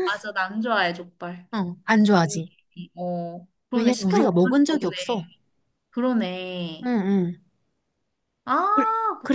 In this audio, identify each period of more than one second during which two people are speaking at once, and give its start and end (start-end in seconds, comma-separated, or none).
3.7-5.2